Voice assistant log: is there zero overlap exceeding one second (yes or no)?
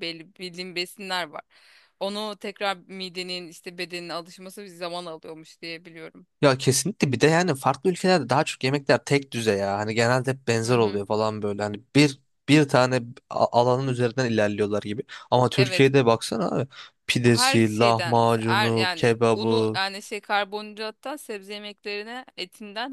no